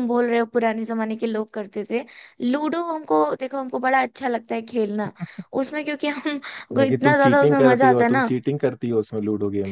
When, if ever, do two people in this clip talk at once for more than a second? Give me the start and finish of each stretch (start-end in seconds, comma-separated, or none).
6.8-8.3